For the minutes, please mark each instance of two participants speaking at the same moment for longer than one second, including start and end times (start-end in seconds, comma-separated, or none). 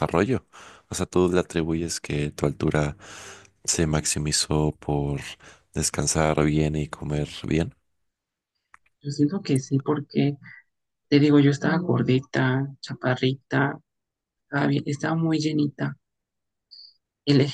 none